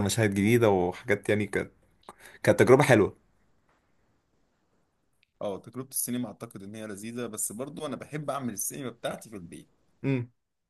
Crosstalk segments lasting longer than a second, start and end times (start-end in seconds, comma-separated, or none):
none